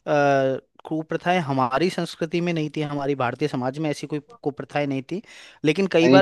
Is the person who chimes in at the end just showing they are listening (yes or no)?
yes